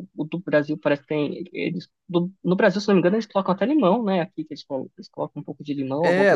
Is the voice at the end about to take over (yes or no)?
yes